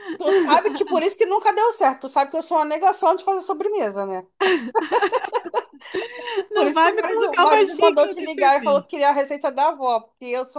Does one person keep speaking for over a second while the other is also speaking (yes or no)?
yes